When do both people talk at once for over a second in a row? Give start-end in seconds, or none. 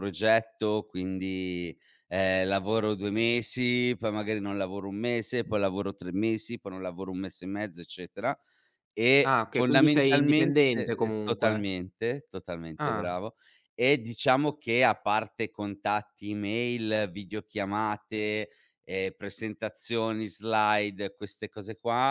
9.2-11.7